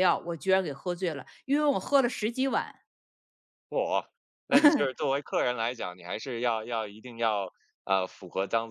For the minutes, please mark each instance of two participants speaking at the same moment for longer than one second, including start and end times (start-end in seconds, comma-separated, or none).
none